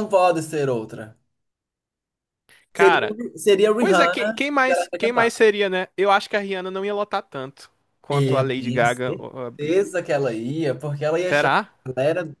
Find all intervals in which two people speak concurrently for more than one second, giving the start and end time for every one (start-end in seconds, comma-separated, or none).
3.8-5.4, 8.1-9.8